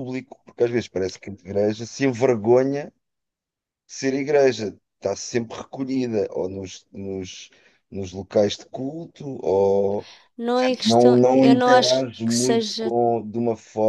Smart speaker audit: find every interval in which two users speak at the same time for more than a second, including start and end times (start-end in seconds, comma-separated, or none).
10.5-12.9